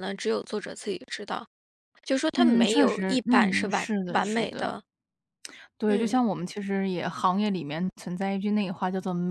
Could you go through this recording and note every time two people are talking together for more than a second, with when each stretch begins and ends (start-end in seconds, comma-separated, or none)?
2.4-4.7